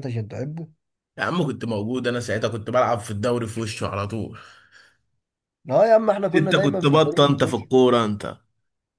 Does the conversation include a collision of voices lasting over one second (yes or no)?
yes